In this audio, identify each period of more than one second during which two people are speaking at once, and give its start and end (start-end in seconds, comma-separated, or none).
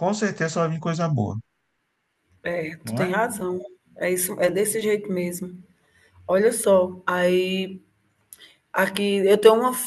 none